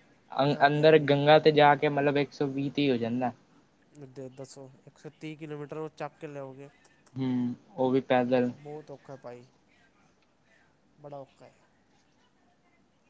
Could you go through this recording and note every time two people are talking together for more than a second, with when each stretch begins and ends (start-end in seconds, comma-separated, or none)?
none